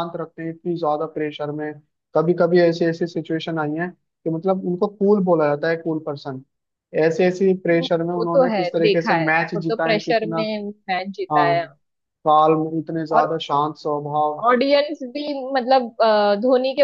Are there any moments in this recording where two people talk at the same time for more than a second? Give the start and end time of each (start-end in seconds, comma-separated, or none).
8.2-10.5